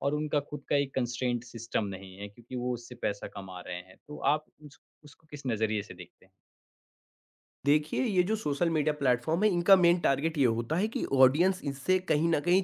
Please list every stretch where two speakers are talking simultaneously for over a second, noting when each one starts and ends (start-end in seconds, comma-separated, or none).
none